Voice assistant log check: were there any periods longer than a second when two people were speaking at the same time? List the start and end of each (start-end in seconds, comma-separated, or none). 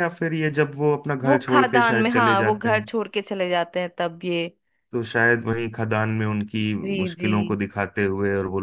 1.2-2.9